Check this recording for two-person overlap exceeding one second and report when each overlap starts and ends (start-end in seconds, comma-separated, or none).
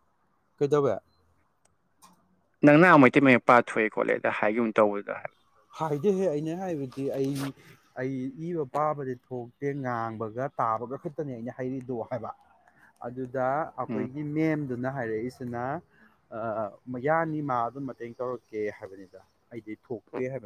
none